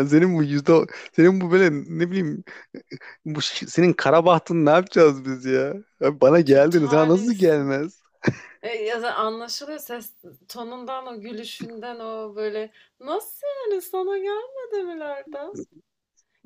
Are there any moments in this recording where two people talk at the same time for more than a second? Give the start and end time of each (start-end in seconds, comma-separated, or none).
6.4-7.7